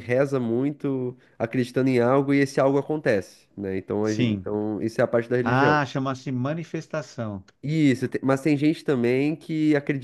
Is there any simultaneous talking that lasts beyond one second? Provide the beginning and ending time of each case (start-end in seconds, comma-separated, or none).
none